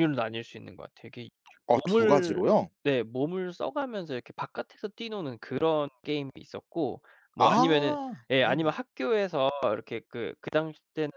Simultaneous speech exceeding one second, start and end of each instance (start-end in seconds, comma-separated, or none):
7.4-8.8